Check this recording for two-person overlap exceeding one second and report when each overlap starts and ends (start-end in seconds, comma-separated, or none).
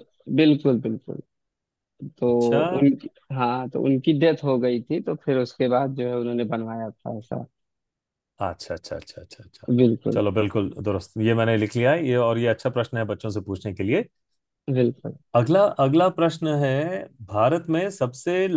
none